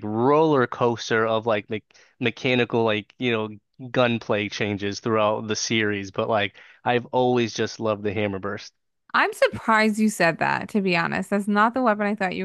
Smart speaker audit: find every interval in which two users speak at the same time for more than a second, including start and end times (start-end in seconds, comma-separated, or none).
none